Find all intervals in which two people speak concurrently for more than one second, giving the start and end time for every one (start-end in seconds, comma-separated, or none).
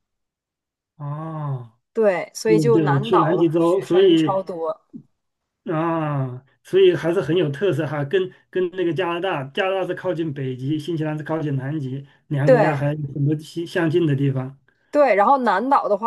2.4-4.4